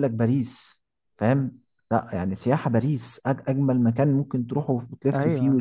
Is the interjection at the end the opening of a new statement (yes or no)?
yes